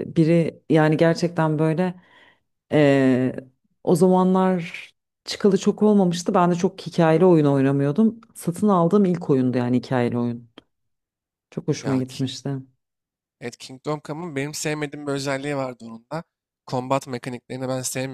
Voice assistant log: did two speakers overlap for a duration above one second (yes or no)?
no